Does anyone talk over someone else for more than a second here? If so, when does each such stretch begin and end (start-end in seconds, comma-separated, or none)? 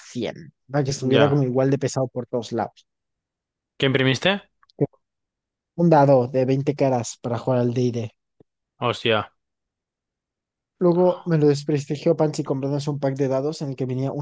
none